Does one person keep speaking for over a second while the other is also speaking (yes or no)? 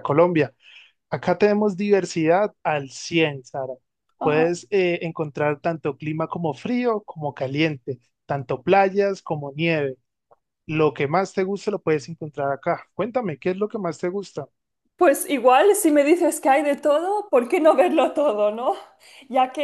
no